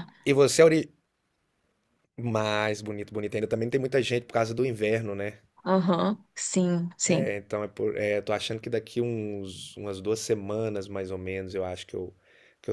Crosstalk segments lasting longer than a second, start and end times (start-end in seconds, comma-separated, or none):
none